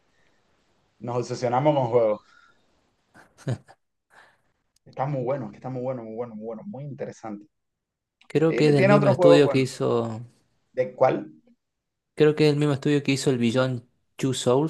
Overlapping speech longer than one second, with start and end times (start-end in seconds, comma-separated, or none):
8.4-9.7